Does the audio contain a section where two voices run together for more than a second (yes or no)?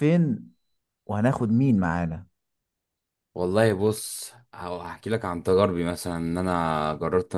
no